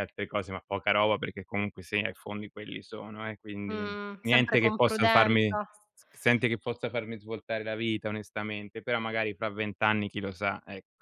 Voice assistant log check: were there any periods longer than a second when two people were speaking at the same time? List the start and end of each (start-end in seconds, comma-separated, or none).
3.7-5.7